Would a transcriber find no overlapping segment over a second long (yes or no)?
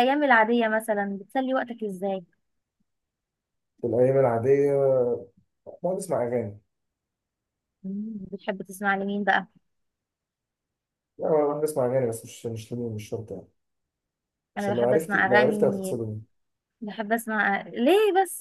no